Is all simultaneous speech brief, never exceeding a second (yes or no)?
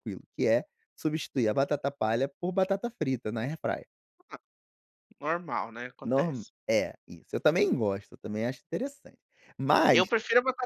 yes